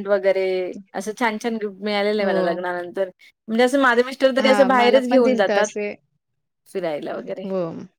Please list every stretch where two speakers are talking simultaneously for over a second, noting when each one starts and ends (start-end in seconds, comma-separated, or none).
4.4-5.7